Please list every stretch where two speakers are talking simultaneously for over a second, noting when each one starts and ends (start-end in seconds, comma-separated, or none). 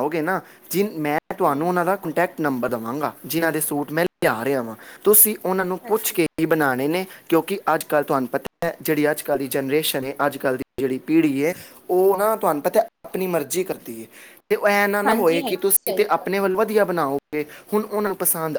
15.1-16.4